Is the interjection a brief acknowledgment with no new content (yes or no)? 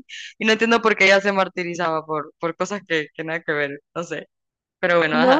no